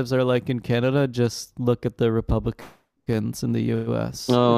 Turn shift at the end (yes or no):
yes